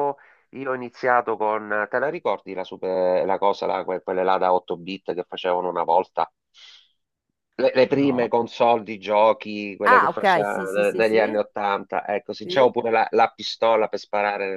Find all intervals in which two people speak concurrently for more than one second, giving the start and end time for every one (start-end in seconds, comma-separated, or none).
9.8-11.4